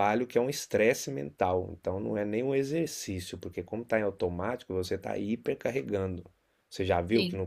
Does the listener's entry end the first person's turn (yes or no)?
no